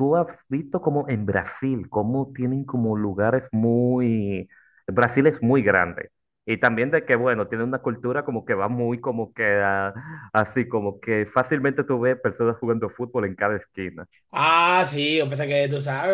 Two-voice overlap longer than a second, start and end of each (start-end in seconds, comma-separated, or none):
none